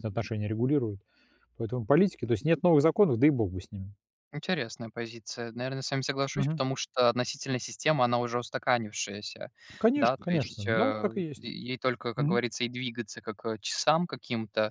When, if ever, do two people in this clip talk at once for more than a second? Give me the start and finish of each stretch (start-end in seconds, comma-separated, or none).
9.9-11.4